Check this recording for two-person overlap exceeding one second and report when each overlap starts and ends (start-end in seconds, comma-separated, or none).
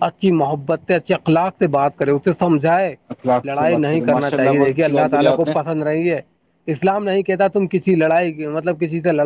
3.5-5.5